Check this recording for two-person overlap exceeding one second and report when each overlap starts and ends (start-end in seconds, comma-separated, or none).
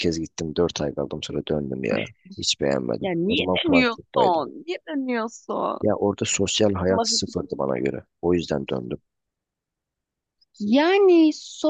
3.0-4.4